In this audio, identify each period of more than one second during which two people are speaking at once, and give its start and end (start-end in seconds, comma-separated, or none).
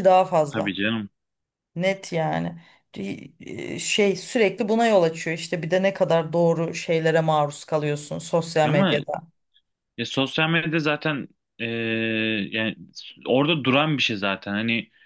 none